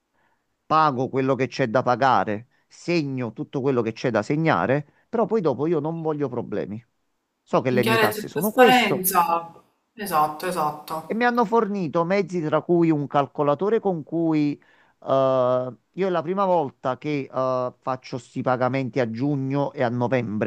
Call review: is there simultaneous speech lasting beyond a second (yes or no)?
yes